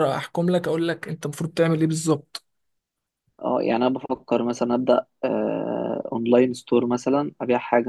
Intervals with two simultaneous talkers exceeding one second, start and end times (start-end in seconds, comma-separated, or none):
none